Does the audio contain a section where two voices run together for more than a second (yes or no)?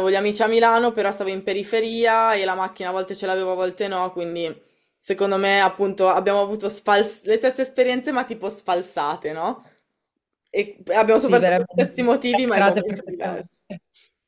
yes